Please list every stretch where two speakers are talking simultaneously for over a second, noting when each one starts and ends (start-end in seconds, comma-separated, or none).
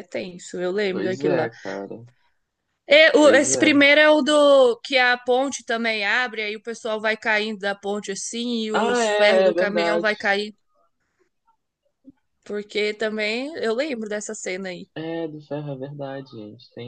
8.7-10.1